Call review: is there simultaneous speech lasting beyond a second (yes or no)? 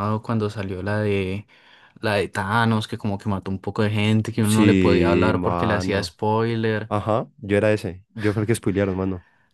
yes